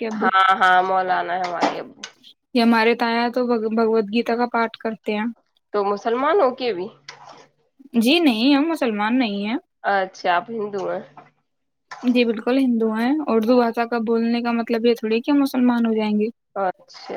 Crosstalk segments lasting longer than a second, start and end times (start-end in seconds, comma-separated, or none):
none